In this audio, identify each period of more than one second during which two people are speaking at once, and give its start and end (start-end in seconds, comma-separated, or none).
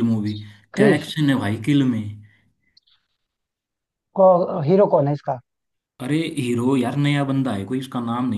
none